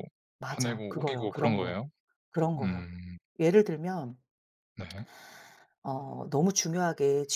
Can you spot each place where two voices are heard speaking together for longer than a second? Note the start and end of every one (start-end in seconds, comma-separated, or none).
0.5-1.8